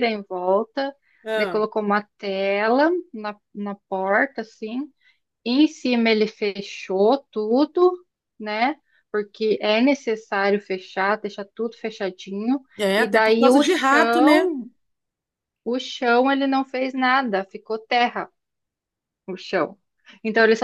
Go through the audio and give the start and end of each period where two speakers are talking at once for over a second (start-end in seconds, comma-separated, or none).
13.0-14.5